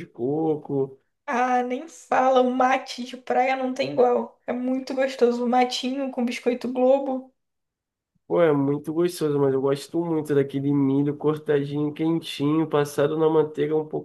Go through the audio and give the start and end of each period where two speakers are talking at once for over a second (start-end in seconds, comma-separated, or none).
none